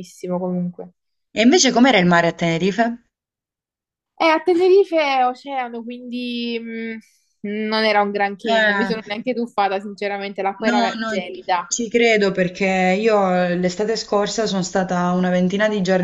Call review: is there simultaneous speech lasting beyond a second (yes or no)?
no